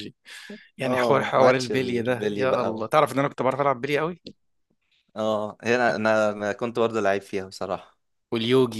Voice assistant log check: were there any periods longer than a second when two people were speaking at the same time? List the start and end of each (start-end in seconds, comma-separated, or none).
0.8-2.9